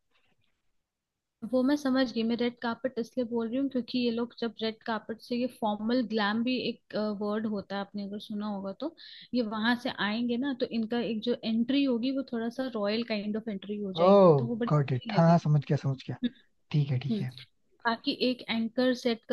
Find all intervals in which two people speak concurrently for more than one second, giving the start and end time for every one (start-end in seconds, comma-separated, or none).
14.0-15.4